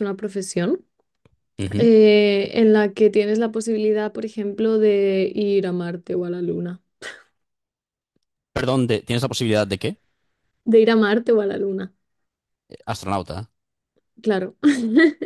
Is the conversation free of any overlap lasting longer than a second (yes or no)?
yes